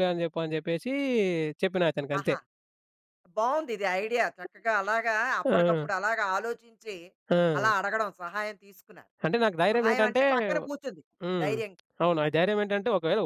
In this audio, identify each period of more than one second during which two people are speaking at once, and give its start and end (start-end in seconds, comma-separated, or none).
none